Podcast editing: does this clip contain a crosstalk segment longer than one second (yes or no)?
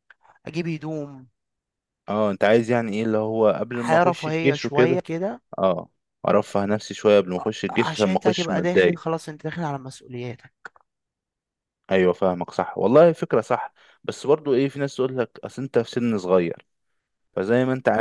yes